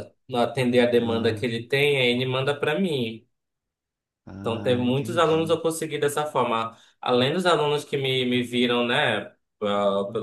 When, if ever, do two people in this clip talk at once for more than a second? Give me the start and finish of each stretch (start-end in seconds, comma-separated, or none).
4.4-5.6